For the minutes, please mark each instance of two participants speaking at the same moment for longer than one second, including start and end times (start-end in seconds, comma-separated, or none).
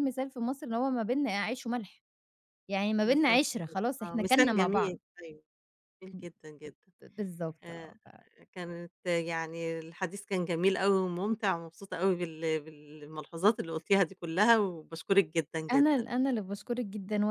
3.0-5.0